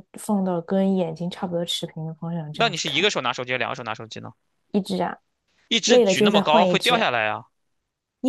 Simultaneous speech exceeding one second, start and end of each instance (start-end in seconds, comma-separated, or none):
5.8-7.1